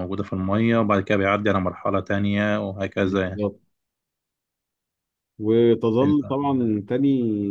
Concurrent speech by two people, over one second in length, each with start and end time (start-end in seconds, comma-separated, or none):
none